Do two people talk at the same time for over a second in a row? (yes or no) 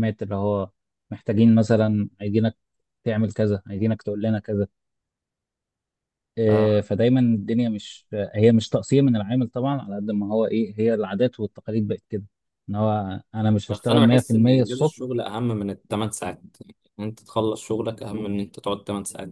yes